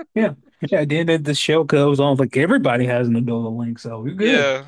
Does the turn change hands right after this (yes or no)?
yes